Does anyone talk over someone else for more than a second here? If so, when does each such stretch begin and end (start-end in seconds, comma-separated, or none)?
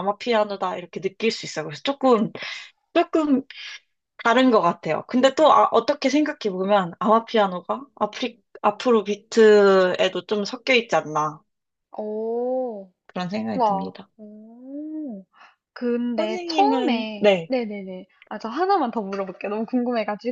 16.2-17.5